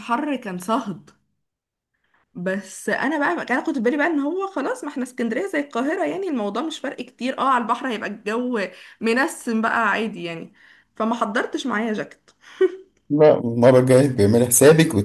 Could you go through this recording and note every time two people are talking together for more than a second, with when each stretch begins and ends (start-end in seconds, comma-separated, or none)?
none